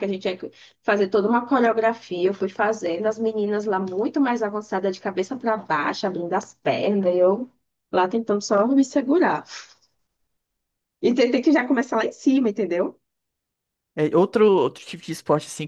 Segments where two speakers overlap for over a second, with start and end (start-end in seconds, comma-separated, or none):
none